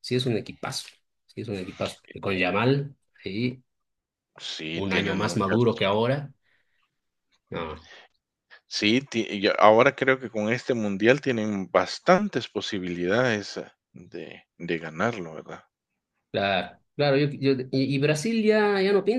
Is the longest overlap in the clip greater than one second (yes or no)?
yes